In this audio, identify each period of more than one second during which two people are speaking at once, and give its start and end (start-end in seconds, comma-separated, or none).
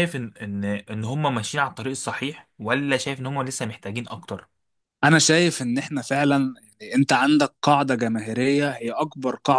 none